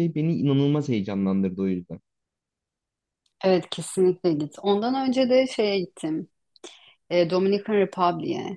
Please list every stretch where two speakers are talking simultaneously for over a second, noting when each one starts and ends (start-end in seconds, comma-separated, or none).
none